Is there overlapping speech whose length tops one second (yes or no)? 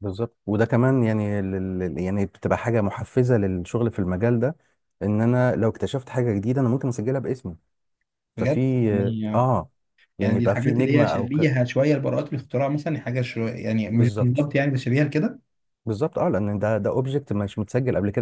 yes